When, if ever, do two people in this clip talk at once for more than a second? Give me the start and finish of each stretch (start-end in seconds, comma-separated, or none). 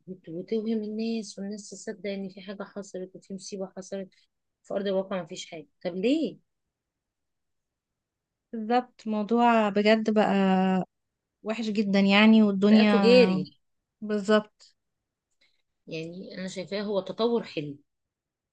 none